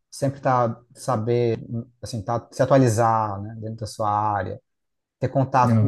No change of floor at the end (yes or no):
yes